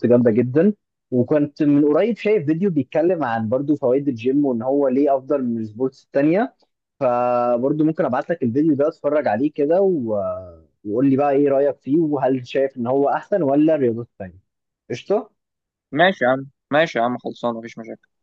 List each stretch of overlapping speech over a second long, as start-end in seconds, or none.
none